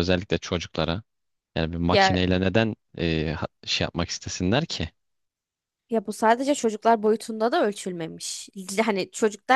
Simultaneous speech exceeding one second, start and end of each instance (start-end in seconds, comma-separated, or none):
none